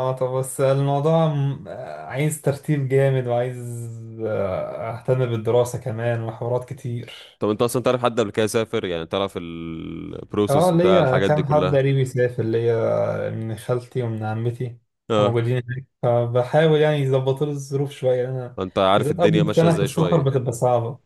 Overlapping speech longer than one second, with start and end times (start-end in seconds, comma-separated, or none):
10.5-11.8, 19.0-20.3